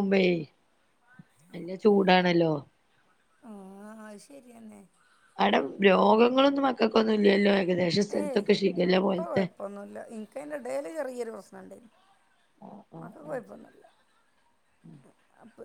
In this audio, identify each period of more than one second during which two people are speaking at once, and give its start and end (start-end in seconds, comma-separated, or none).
none